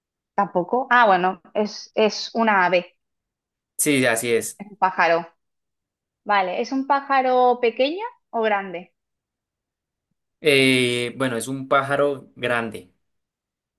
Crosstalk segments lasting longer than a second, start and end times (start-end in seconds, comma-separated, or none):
none